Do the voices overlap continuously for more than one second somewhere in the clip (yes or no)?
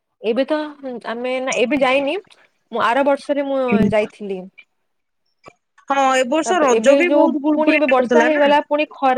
yes